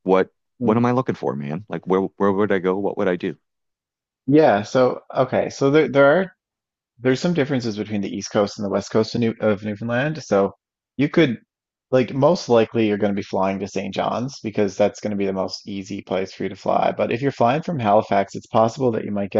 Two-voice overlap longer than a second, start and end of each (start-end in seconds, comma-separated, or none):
none